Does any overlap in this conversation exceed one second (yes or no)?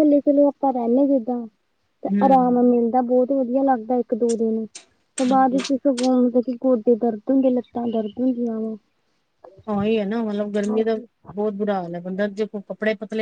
no